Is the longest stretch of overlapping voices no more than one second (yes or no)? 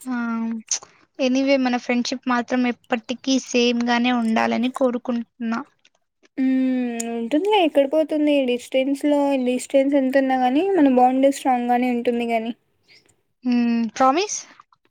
yes